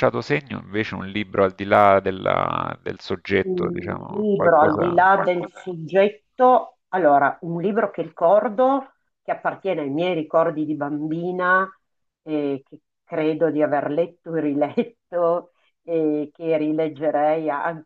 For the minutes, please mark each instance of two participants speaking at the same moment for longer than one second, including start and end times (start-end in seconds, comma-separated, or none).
3.4-5.0